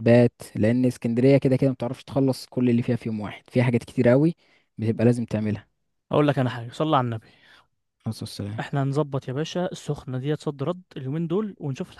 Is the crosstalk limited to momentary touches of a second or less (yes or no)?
yes